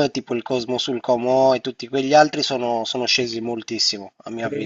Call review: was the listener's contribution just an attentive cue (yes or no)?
no